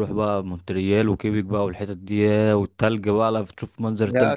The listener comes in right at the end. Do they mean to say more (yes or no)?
yes